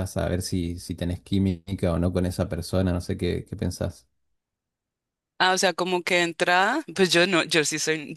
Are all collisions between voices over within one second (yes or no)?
yes